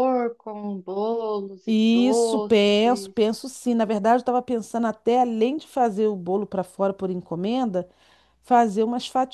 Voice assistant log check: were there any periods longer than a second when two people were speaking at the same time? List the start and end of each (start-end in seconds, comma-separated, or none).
1.6-3.1